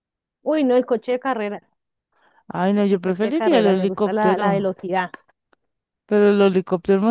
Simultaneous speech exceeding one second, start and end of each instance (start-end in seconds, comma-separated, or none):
2.9-4.7